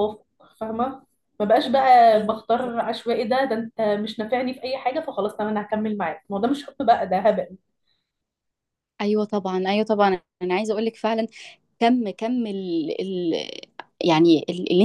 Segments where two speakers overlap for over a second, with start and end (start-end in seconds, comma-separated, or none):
none